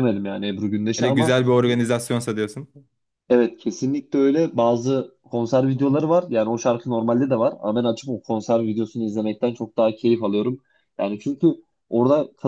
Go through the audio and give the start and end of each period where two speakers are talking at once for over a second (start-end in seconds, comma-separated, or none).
none